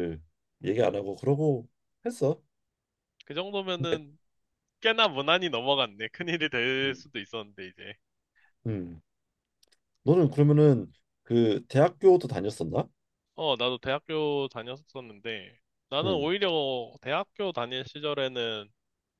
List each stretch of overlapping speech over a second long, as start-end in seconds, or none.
none